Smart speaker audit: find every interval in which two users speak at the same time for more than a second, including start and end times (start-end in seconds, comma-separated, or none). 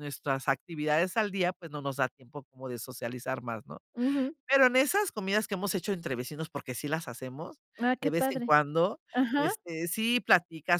none